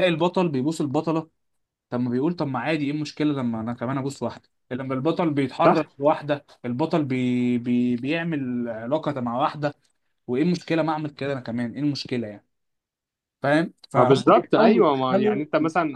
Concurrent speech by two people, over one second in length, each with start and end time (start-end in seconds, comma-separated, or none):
13.9-15.4